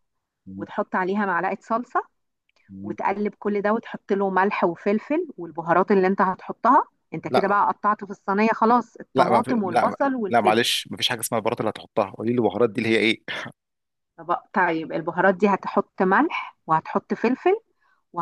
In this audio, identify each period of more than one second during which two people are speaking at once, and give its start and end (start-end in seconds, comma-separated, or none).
9.2-10.6